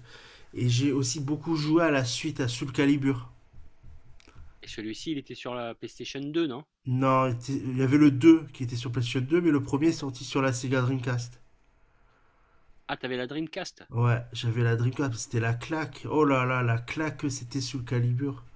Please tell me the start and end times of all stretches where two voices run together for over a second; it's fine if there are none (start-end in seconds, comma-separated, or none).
none